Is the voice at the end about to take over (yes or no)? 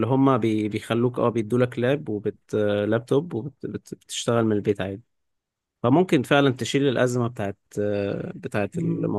yes